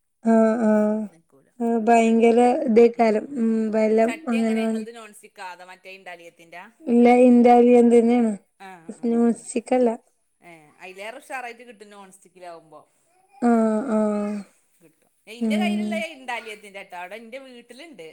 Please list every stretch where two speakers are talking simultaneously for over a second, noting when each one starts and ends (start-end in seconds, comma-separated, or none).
none